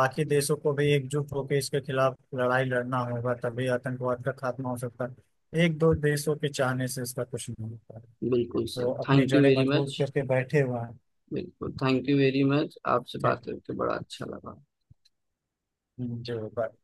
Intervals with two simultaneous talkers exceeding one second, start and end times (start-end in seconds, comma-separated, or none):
8.4-10.0